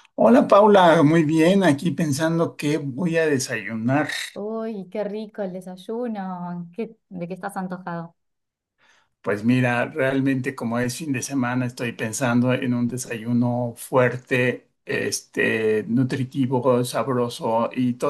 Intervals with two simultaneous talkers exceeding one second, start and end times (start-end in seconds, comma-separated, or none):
none